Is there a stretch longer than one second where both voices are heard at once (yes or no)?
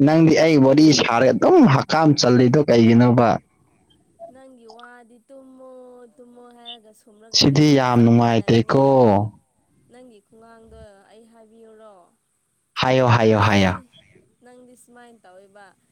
yes